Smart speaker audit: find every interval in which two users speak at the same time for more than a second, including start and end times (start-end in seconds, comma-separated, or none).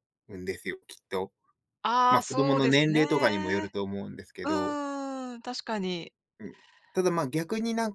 2.1-3.7